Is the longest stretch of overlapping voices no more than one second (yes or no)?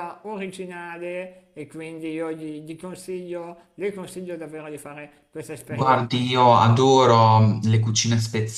yes